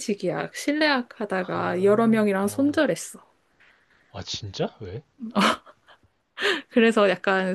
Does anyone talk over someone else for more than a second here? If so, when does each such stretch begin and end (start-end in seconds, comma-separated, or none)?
1.3-2.8